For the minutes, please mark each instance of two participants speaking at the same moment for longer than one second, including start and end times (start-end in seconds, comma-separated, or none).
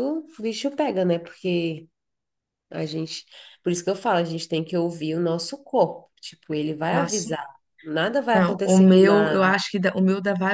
8.3-9.6